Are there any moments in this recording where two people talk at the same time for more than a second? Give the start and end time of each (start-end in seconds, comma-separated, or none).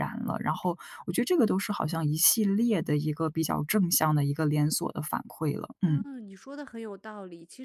none